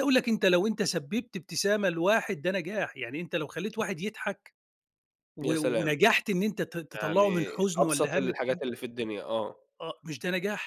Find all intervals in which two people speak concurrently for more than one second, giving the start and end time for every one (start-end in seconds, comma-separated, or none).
6.9-8.6